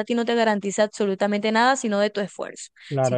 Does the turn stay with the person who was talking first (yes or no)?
no